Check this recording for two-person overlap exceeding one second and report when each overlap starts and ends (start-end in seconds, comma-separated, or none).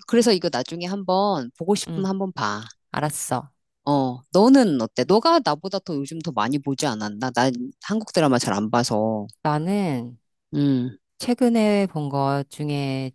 none